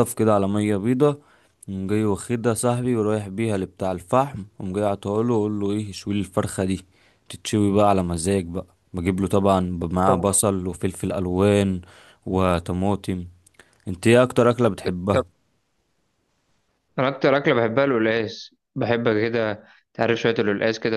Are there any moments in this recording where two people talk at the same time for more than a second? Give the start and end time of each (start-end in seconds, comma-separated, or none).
none